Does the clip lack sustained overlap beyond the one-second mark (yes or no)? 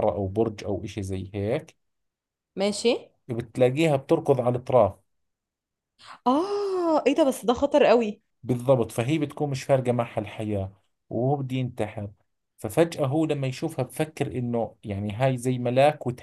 yes